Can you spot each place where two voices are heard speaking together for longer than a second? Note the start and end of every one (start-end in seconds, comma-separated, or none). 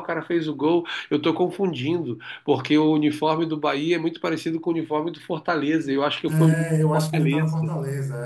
6.3-7.6